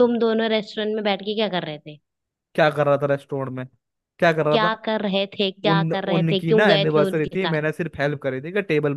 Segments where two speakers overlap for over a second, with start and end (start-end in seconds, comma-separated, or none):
5.7-7.6